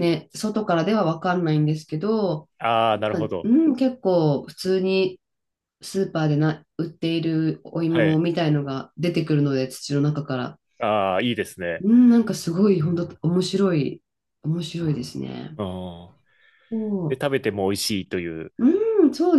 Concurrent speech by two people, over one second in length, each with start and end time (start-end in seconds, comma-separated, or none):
none